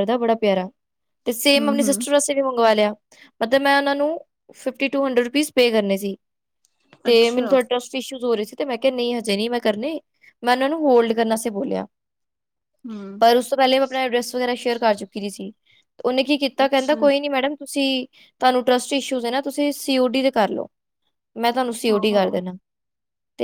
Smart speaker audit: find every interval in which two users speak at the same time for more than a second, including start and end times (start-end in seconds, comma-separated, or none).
none